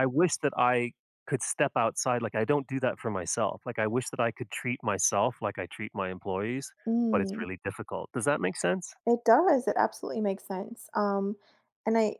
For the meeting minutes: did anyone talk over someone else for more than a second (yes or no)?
no